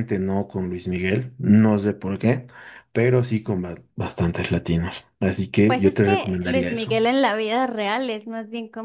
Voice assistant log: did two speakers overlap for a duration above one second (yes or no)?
yes